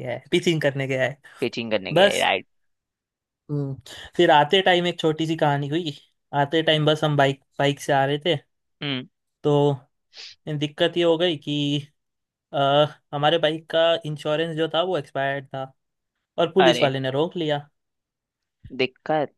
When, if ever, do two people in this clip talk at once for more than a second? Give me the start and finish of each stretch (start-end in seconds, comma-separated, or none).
none